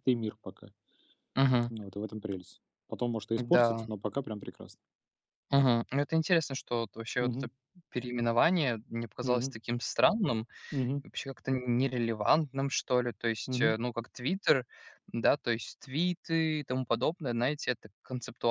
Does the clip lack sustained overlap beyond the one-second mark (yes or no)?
yes